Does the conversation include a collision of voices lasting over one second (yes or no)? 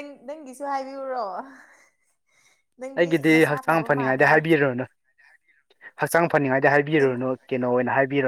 yes